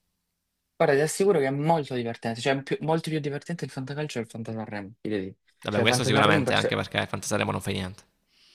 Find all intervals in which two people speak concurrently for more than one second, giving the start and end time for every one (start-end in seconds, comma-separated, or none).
5.6-6.8